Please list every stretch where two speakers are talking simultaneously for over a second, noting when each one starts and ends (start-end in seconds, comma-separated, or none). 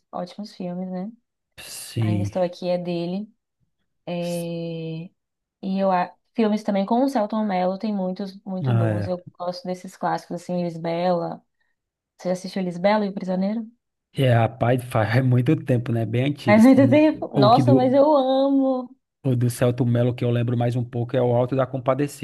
16.5-18.0